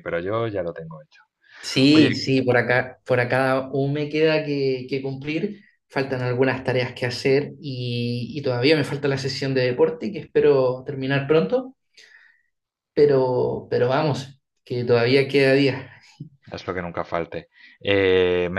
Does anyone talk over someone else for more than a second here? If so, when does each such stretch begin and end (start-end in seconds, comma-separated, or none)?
none